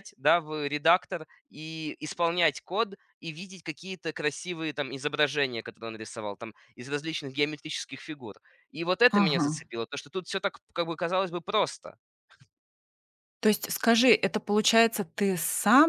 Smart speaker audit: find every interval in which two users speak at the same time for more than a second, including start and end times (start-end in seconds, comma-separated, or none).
none